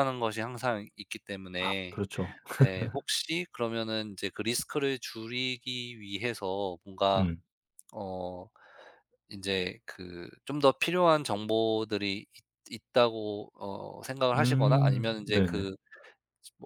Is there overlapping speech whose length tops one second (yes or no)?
yes